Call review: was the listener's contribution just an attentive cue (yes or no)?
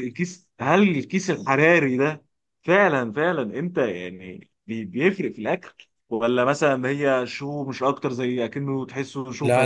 no